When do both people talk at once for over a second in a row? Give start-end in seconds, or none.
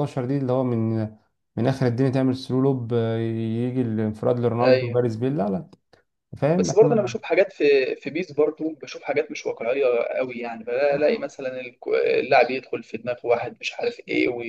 none